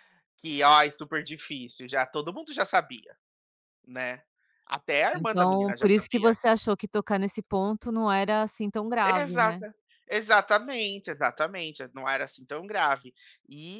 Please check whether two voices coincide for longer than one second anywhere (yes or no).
yes